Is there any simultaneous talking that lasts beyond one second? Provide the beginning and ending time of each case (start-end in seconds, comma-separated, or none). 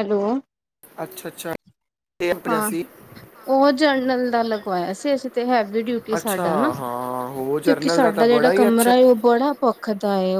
7.6-8.9